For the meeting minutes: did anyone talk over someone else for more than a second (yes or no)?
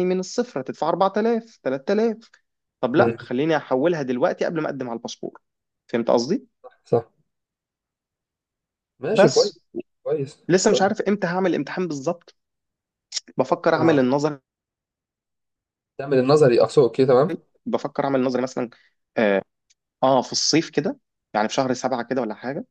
no